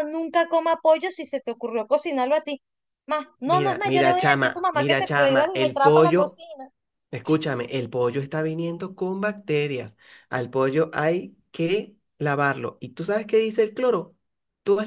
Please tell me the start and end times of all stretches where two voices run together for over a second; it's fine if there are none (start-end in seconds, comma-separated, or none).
3.5-6.4